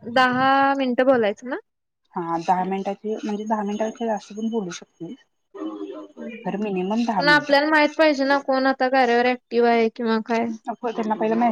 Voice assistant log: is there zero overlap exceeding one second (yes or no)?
yes